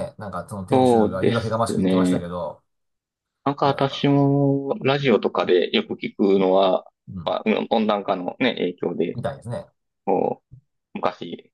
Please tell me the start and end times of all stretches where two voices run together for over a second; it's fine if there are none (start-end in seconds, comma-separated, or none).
0.7-2.3